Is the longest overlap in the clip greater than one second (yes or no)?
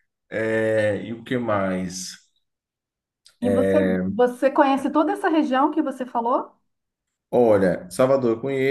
no